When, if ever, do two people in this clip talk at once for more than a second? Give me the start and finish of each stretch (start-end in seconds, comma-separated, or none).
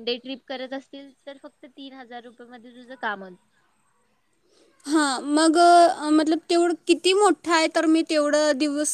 none